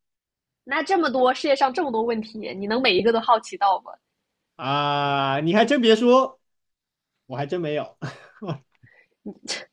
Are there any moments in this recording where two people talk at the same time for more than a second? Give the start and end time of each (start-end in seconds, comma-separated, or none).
none